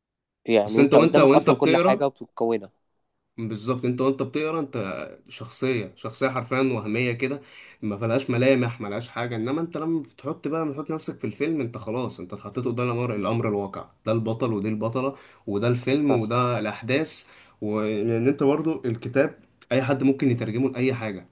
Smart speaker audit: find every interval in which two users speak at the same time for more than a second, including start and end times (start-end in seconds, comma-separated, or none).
0.7-2.1